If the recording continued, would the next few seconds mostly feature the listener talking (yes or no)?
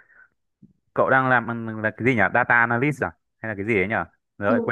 yes